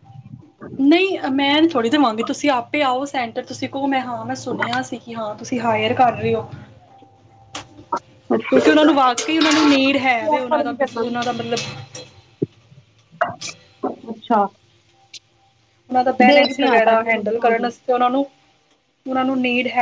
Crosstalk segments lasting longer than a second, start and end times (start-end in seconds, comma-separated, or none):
16.3-17.7